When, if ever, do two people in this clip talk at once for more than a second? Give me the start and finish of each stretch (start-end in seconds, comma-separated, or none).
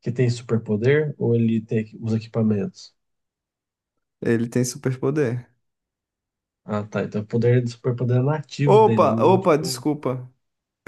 8.7-9.8